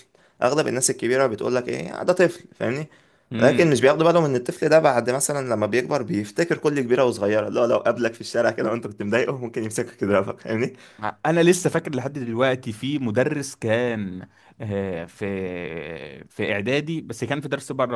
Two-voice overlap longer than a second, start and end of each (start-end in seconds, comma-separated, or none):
none